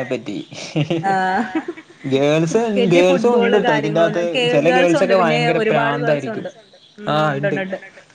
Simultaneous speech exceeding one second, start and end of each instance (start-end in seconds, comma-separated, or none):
2.5-6.5